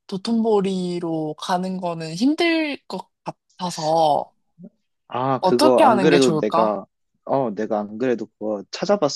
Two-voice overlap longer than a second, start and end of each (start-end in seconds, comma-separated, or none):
5.4-6.8